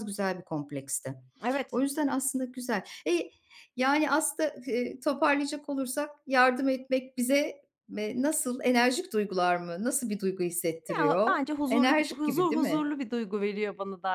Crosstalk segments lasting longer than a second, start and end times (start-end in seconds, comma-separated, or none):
11.0-12.9